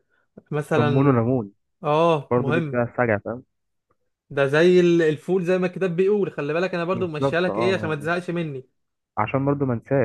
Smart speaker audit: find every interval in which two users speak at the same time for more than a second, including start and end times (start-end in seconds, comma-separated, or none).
6.9-8.1